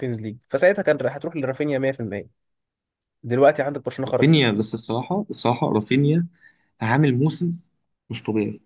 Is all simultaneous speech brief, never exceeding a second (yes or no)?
yes